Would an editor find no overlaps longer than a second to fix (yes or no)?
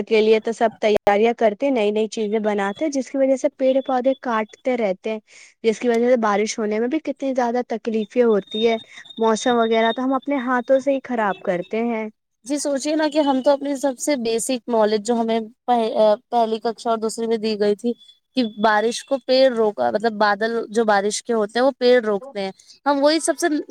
yes